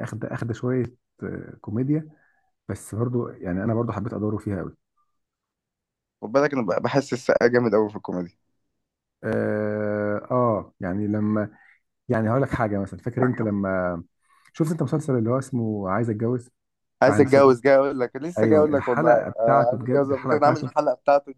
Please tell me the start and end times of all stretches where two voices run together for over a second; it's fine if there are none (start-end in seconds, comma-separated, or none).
18.4-20.7